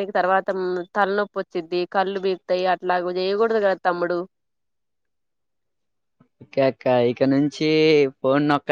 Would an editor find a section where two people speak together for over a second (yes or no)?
no